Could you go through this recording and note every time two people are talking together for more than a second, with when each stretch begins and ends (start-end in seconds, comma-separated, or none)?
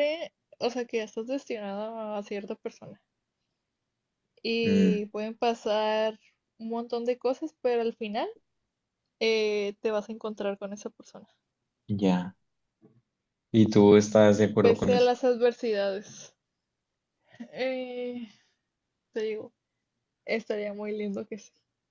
none